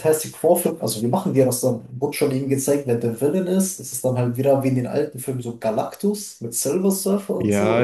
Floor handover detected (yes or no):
yes